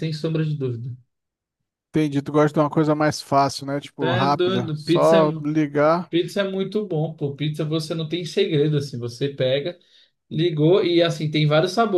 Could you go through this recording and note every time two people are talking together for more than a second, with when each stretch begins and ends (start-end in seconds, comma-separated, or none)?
4.0-5.5